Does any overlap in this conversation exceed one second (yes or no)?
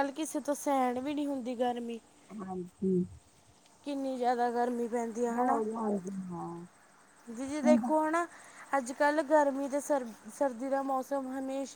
no